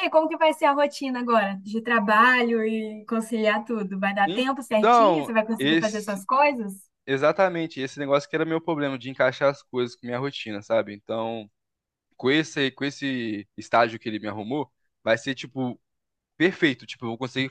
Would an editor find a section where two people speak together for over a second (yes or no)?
yes